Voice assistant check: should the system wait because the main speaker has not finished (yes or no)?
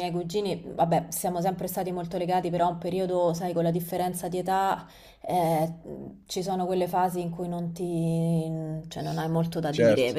yes